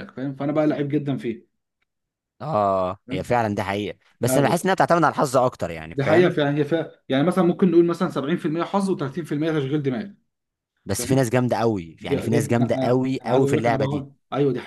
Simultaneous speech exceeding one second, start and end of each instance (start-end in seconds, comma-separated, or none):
12.0-14.1